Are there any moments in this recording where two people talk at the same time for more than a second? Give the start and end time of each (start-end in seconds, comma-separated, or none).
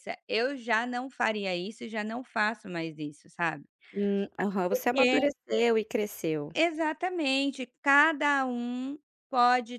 none